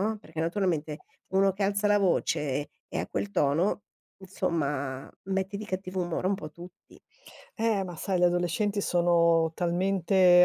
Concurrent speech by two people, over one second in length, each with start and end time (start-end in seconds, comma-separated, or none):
none